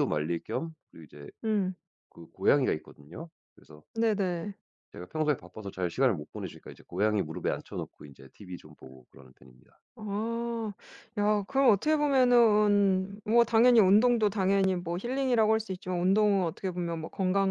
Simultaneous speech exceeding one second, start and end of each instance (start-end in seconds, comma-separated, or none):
none